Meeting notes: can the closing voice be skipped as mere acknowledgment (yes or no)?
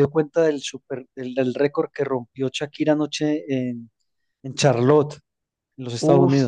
no